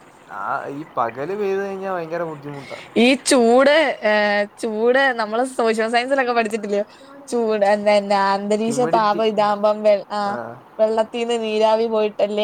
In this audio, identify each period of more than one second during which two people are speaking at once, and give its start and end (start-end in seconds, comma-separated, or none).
none